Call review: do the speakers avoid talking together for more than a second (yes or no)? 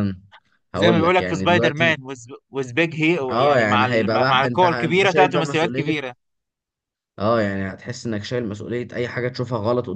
no